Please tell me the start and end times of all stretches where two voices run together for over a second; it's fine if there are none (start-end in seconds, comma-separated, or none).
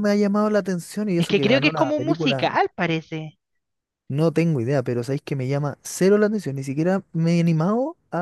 1.2-2.5